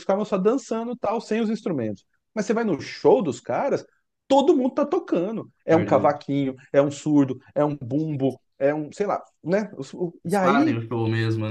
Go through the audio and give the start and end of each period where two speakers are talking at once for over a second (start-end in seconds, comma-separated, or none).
none